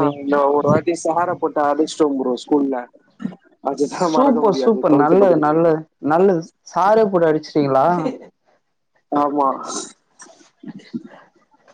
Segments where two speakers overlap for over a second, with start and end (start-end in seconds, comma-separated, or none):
4.1-5.6